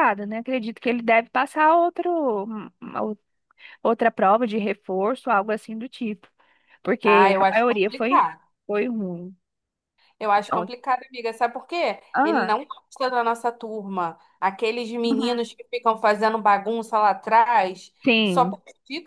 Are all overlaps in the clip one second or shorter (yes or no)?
no